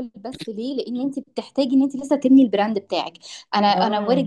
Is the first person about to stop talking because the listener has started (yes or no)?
no